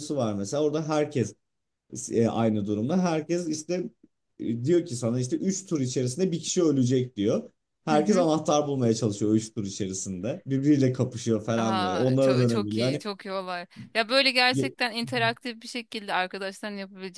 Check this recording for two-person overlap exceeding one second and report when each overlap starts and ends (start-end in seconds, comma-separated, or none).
11.6-13.0